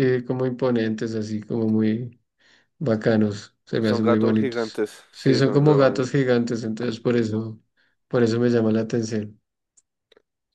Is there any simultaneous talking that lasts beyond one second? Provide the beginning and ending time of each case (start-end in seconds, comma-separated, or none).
3.8-6.1